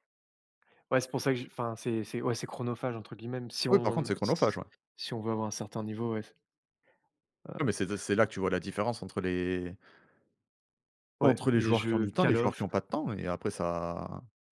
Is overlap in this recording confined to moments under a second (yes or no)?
no